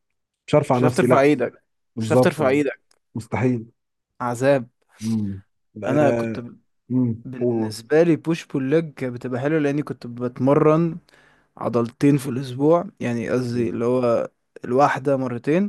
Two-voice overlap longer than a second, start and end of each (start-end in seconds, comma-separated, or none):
none